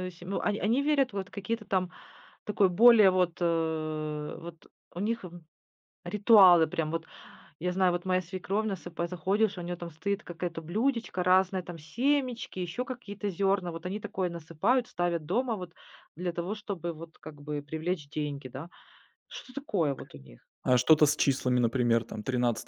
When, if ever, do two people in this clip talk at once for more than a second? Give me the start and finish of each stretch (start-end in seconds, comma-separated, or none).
none